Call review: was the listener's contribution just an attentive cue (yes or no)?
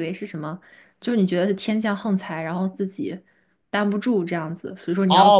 no